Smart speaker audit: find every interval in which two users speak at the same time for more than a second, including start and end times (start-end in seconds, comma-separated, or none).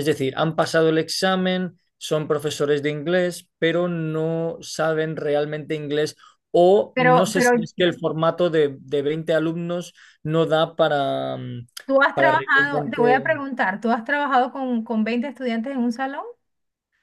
12.1-13.3